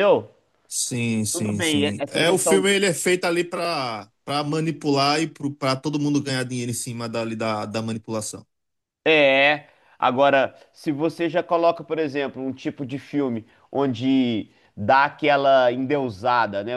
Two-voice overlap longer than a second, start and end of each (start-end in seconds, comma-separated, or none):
1.3-2.7